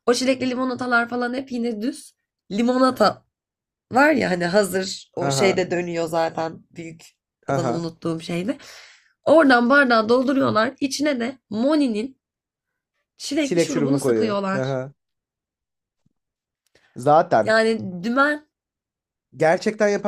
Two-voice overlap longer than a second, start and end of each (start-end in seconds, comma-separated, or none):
13.4-14.8